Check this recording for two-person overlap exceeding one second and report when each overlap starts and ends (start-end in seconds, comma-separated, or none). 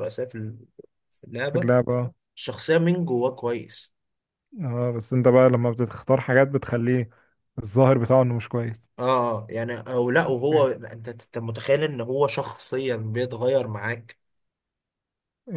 none